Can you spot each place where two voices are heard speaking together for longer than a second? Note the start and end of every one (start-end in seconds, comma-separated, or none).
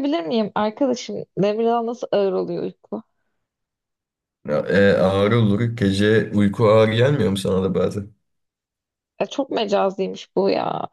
none